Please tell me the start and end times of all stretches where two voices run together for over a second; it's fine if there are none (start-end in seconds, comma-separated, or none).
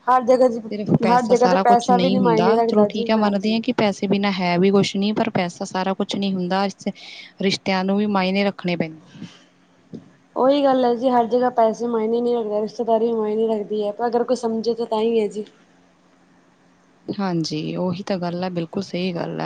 1.1-3.6